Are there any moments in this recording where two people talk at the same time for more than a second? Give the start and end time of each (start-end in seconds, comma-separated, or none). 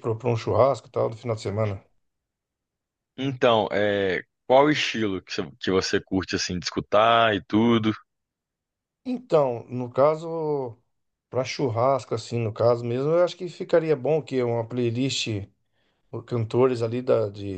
none